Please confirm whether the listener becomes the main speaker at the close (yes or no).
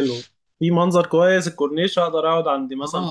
yes